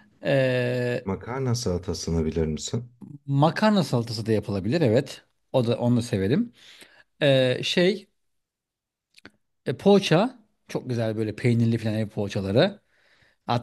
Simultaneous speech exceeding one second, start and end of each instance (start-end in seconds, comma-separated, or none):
none